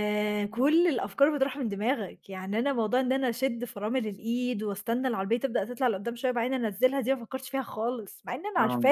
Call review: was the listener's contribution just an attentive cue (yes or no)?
no